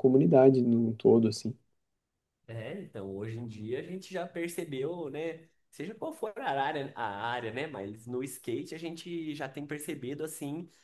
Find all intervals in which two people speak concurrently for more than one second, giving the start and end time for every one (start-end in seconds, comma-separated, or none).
none